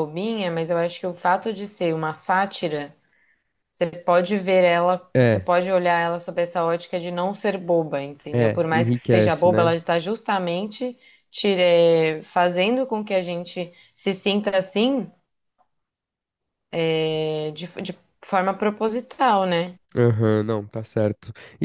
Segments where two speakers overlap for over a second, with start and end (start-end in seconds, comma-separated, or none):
8.3-9.8